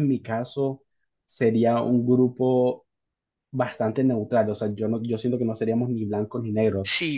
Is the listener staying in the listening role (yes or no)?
no